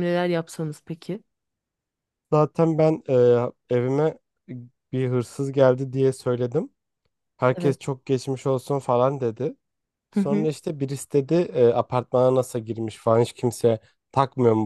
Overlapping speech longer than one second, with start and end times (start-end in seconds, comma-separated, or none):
none